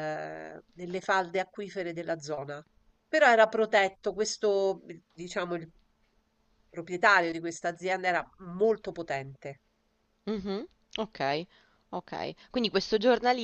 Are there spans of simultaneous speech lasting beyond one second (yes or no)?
no